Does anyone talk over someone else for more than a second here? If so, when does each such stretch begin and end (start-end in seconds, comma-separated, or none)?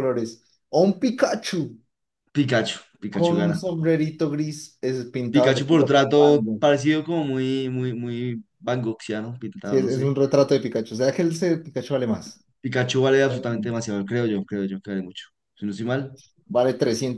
5.3-6.6